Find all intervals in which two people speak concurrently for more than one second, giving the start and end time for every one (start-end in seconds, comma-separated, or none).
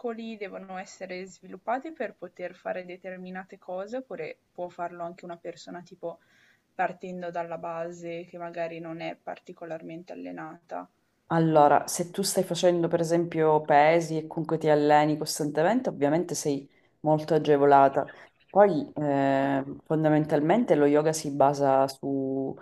none